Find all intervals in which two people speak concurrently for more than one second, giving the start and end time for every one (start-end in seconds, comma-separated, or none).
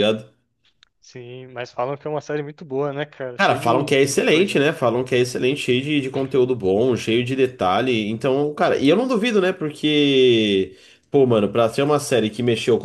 3.4-4.6